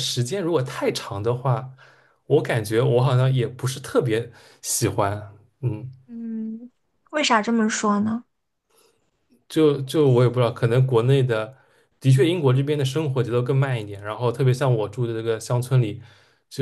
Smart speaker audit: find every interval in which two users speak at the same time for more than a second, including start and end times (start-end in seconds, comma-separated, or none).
none